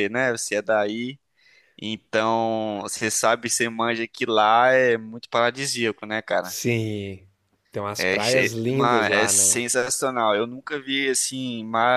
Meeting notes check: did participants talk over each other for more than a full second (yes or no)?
yes